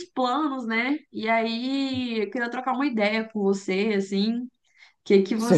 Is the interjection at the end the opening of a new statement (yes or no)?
yes